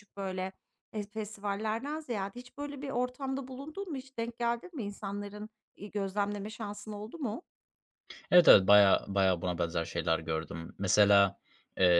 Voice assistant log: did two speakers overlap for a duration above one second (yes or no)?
no